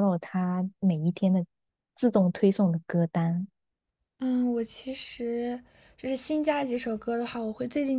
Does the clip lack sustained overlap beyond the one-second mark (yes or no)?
yes